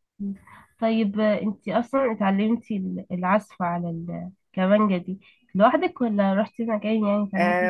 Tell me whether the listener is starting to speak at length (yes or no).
yes